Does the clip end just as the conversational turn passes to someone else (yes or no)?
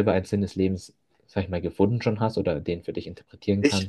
yes